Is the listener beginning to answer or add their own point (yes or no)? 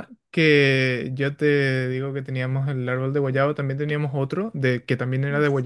no